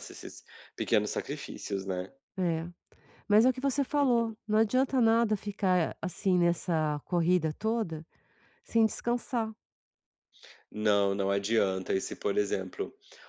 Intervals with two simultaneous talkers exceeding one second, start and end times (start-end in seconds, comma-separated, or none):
none